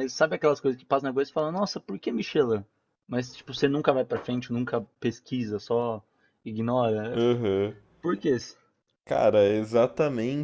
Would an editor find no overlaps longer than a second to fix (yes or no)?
yes